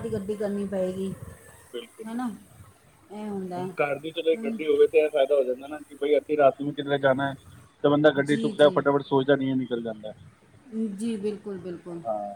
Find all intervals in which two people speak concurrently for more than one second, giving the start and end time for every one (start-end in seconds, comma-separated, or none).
none